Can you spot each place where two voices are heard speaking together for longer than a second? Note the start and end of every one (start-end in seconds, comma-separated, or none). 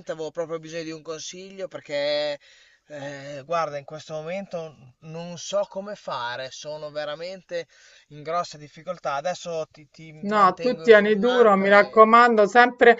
10.3-12.2